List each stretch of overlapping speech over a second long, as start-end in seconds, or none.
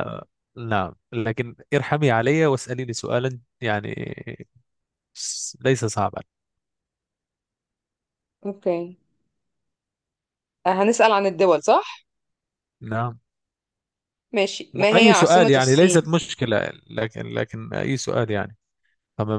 14.7-16.1